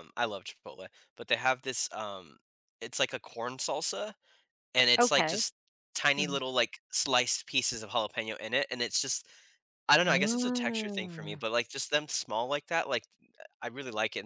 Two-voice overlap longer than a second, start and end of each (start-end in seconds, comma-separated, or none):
10.0-11.4